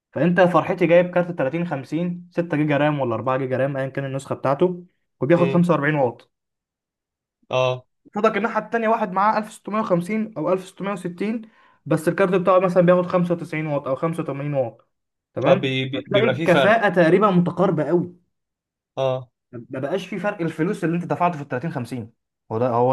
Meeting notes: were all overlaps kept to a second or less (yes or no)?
no